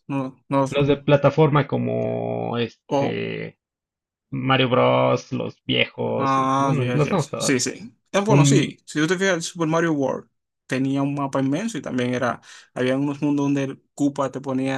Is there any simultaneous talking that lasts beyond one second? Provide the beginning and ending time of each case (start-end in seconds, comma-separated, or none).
6.2-7.6